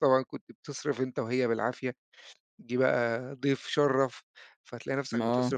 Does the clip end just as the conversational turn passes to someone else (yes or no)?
no